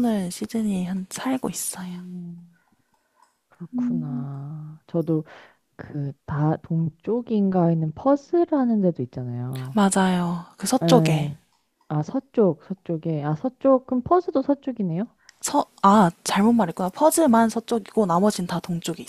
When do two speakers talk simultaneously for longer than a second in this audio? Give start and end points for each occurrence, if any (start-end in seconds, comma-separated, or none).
none